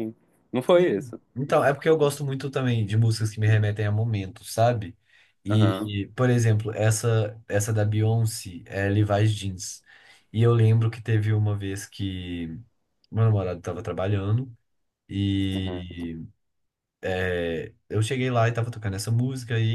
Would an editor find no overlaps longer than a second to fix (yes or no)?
yes